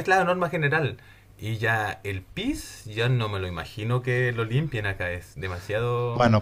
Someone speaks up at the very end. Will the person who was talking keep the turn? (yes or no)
no